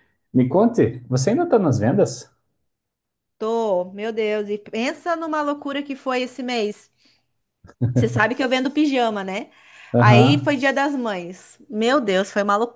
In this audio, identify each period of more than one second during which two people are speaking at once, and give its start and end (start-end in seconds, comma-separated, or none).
none